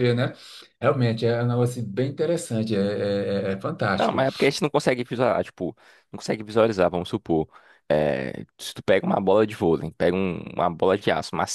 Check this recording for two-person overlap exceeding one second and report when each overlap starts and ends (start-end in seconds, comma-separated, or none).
none